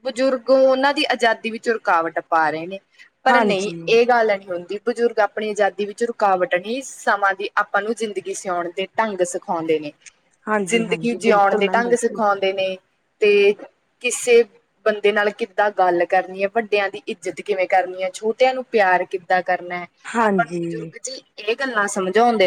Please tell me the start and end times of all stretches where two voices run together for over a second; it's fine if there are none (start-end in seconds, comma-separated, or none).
10.7-12.2